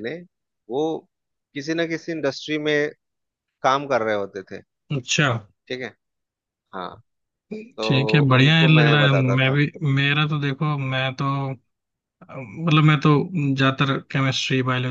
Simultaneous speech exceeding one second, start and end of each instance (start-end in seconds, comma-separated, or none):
7.8-9.6